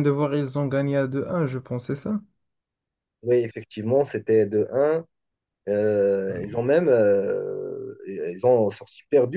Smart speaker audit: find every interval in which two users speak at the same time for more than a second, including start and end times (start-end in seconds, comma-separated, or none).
none